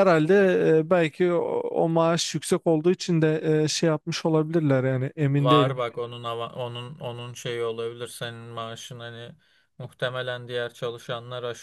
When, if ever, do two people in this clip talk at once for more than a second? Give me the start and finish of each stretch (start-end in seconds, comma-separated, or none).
none